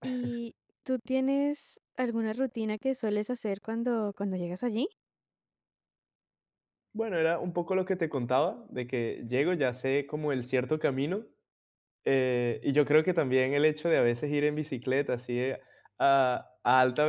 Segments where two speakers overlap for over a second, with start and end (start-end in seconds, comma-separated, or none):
none